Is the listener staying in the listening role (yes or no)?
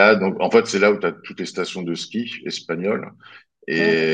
yes